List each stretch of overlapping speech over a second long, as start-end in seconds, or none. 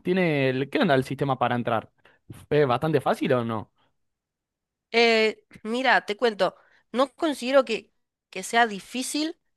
none